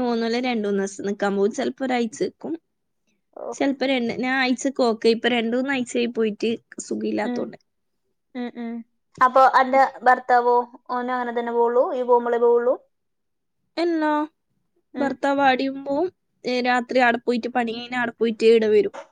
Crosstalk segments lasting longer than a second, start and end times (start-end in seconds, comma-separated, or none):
none